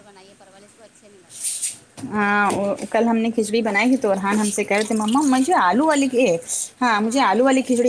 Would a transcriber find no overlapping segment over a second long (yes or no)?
yes